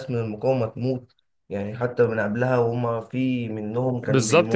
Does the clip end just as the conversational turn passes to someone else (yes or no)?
yes